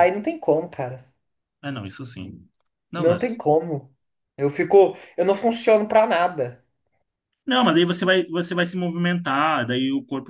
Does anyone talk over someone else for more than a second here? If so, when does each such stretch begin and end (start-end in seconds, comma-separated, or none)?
none